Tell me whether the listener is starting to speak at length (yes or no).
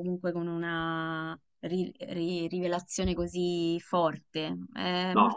no